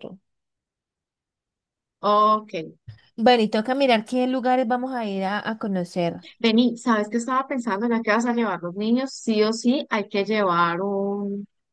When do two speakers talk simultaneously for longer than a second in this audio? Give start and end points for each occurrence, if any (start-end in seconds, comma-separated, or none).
none